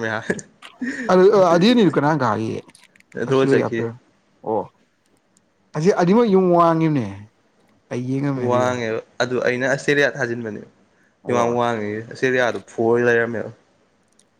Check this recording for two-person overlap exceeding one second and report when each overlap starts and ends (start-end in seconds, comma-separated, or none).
none